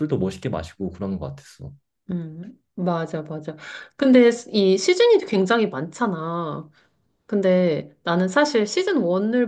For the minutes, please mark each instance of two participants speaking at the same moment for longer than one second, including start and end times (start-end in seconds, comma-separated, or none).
none